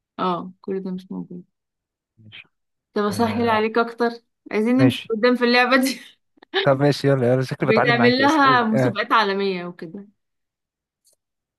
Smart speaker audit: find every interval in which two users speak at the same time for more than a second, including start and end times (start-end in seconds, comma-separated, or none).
7.6-9.0